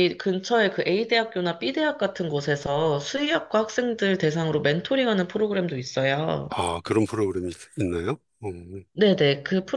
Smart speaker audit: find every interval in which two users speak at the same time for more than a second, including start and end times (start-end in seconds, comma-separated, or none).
none